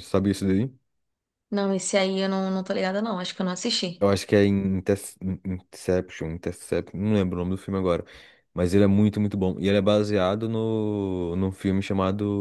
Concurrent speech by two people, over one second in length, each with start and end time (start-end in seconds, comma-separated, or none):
none